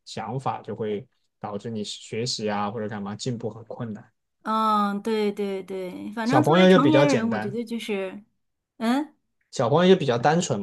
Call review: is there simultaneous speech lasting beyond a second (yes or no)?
yes